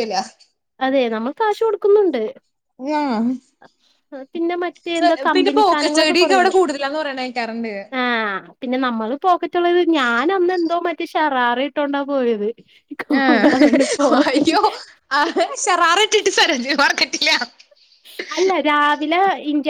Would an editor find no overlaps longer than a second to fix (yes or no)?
no